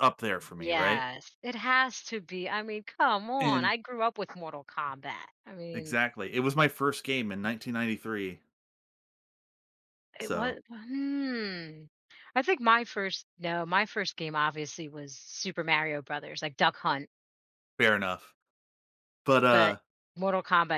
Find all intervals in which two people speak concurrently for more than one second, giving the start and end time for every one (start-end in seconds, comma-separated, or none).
none